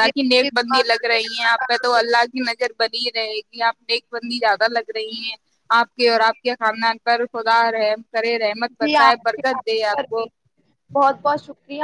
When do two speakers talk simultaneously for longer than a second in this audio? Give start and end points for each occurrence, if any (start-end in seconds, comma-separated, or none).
8.8-10.2